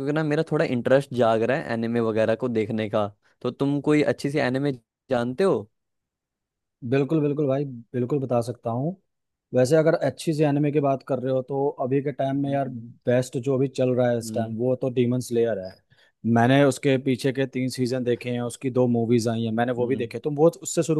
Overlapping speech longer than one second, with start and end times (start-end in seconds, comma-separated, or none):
none